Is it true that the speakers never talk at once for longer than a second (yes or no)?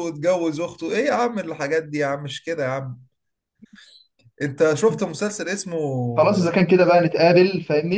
yes